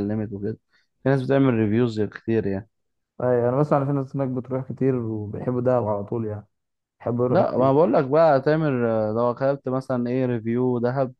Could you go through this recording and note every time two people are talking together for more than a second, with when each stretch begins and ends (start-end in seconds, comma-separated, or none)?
none